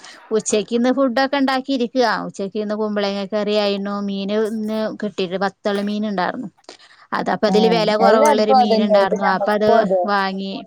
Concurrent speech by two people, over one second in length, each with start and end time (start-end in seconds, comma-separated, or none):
7.5-9.7